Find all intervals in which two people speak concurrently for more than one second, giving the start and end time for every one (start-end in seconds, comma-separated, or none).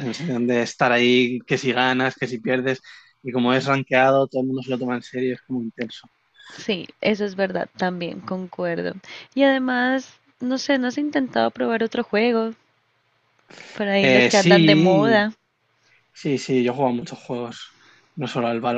14.0-15.2